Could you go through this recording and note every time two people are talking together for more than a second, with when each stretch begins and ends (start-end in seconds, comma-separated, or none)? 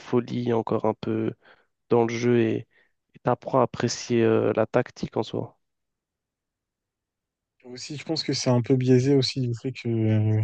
none